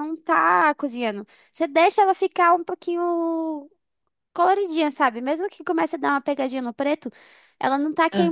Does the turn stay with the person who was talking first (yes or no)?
yes